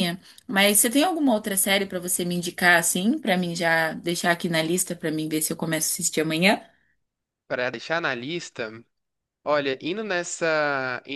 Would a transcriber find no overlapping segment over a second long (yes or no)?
yes